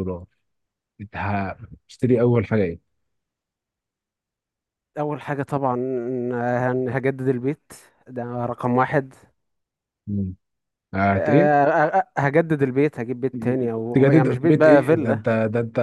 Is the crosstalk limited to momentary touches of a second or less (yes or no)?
no